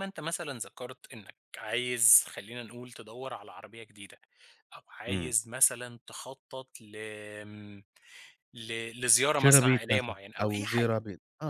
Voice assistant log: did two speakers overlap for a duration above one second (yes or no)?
yes